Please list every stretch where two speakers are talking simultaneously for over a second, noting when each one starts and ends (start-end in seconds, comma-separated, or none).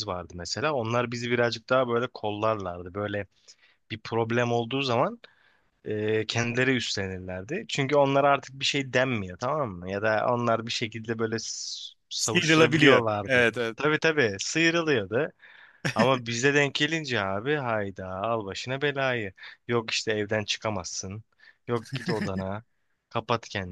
12.2-13.8